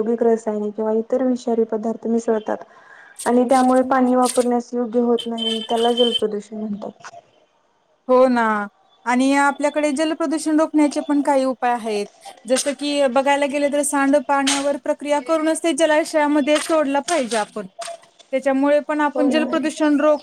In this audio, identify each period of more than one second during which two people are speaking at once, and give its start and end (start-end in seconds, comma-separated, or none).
none